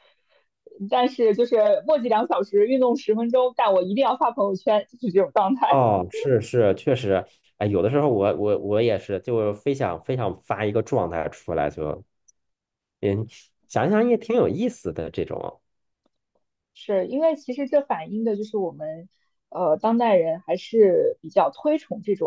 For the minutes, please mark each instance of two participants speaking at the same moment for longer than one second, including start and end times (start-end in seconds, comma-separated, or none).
none